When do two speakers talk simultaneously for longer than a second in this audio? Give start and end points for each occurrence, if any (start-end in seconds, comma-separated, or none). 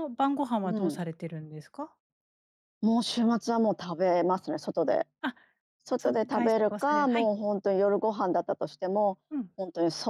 6.0-7.3